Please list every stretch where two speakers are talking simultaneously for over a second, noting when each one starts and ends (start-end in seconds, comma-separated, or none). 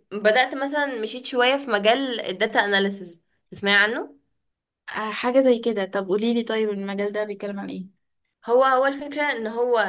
none